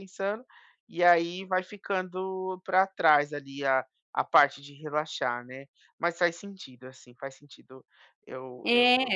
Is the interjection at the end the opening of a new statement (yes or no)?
yes